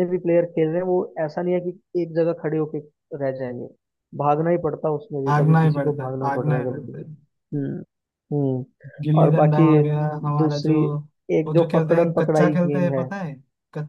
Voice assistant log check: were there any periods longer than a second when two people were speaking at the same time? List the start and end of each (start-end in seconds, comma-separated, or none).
5.3-7.1, 11.5-13.1